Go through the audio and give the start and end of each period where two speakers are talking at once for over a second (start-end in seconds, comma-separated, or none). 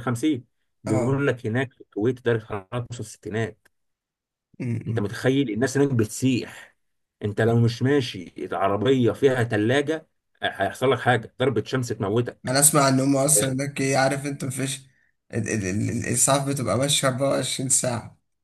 none